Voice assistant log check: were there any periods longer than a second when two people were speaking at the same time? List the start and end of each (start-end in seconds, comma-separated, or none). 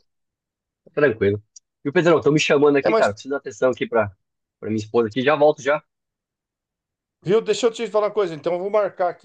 none